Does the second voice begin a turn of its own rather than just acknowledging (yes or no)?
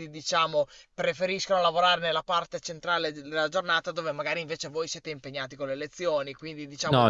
yes